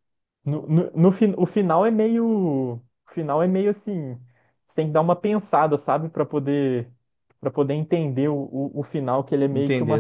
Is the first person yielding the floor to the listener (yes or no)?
no